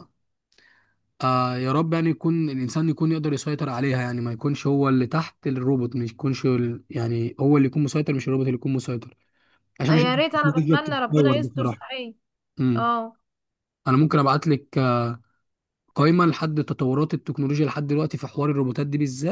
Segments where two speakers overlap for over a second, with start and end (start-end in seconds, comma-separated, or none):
9.9-11.8